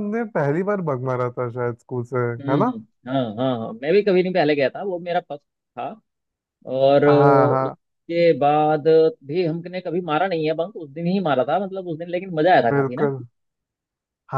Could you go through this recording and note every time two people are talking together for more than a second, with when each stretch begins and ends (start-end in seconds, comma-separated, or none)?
none